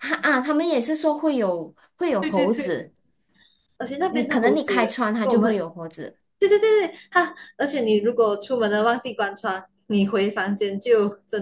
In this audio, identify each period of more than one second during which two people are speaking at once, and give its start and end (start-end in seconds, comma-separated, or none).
4.1-5.6